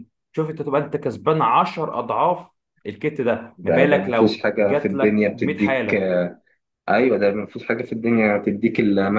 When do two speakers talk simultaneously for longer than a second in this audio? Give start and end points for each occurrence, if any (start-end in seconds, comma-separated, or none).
3.6-6.1